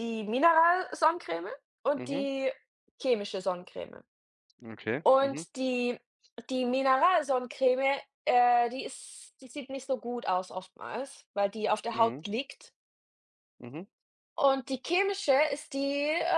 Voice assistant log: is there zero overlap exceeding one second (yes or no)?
yes